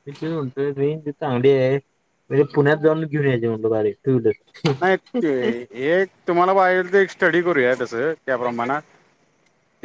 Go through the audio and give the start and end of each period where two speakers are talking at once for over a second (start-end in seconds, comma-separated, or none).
none